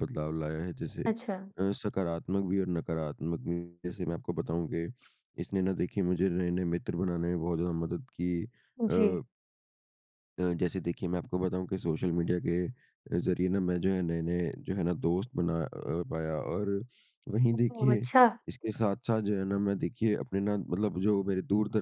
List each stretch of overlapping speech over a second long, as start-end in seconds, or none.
none